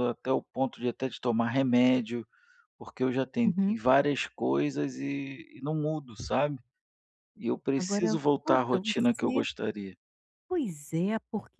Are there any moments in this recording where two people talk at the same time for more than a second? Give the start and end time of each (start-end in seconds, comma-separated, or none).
7.8-9.4